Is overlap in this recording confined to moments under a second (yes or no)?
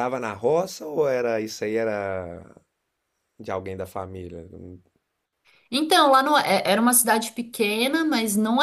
yes